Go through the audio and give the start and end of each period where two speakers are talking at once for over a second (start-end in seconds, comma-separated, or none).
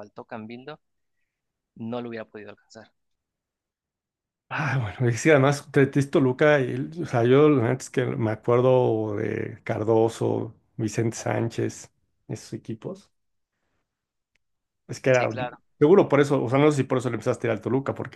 none